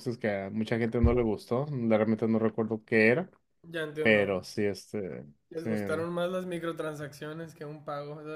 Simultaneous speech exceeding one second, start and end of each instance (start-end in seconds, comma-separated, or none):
none